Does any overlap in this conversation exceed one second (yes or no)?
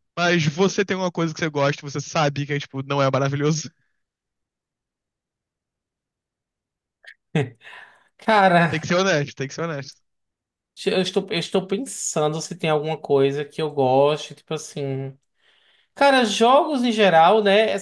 no